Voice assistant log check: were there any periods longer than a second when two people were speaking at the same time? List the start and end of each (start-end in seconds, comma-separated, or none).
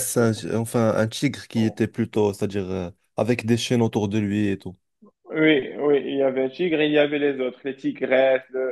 none